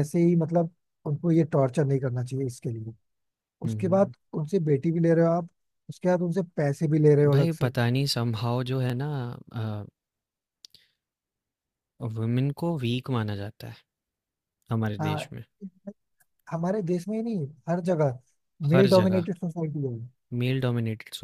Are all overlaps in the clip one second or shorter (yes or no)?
yes